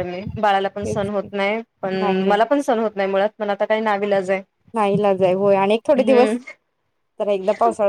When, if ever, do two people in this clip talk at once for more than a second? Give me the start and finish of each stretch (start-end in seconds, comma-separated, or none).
none